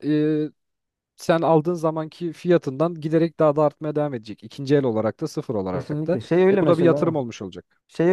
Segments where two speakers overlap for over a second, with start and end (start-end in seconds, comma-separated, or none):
5.7-7.2